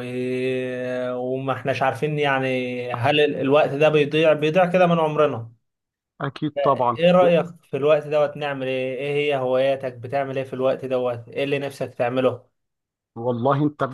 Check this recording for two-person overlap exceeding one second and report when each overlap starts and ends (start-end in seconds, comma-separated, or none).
none